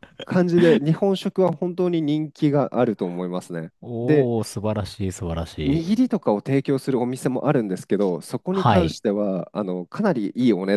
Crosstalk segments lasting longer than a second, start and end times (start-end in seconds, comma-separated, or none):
none